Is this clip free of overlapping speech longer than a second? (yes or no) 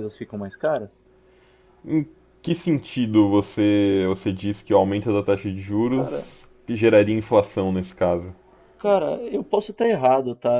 yes